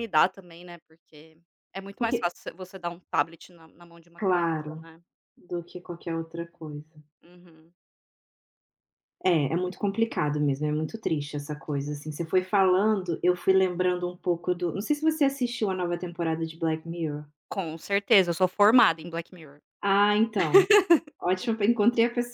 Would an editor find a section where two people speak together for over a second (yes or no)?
no